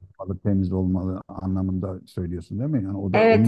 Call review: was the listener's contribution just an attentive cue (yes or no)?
no